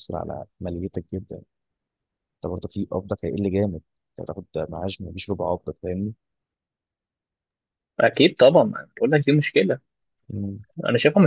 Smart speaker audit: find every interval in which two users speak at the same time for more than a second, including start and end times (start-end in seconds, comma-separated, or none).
none